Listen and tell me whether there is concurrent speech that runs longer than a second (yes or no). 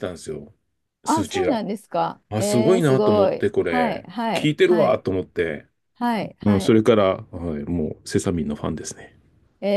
yes